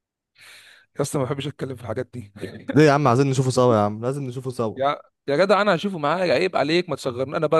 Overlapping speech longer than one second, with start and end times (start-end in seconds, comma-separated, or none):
none